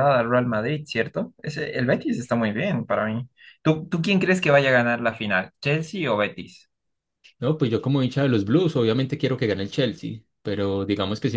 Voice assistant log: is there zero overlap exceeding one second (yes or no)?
yes